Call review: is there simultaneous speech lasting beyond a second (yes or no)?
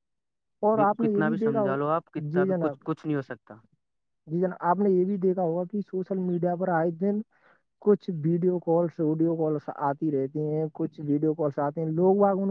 yes